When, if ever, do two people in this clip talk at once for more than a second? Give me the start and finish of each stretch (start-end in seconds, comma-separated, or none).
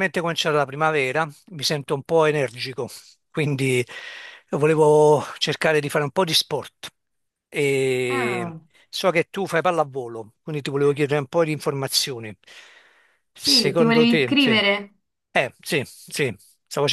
13.4-14.6